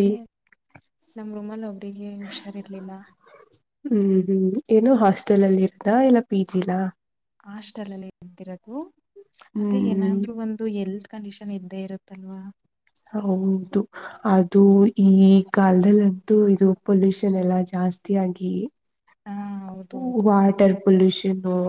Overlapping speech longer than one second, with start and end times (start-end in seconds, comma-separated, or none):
none